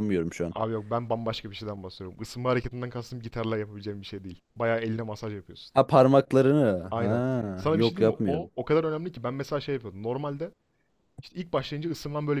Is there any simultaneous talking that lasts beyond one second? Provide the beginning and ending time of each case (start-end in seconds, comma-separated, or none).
6.9-8.5